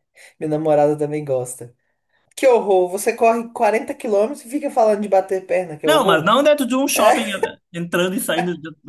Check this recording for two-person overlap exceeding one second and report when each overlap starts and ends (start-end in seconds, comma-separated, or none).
none